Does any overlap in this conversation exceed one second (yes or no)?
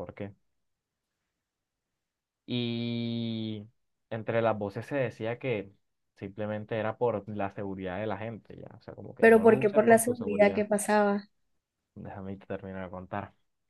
yes